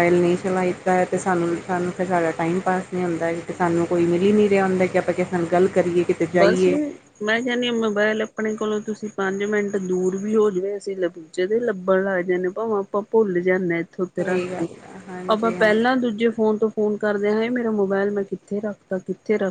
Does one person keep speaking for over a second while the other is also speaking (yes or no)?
no